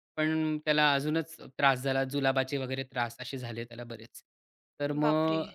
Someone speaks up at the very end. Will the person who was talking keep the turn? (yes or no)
yes